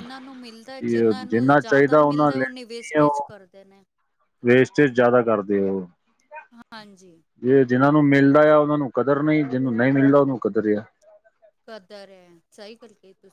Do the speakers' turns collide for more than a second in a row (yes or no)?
yes